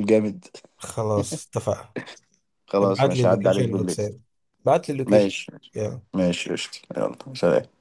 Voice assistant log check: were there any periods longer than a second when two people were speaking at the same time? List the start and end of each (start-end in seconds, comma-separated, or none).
2.8-4.0